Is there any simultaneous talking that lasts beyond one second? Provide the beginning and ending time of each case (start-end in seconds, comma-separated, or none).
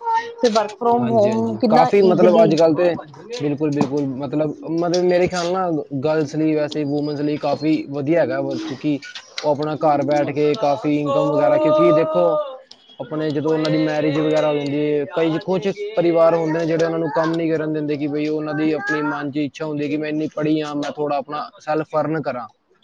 1.0-2.5